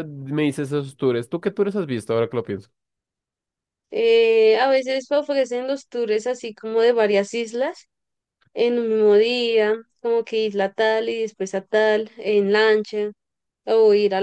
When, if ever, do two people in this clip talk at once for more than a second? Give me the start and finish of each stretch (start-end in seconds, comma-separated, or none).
none